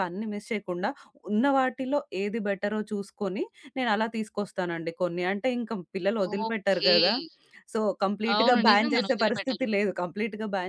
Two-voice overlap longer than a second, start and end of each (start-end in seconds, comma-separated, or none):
8.4-9.7